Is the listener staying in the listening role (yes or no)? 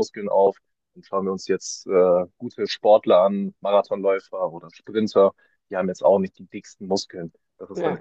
yes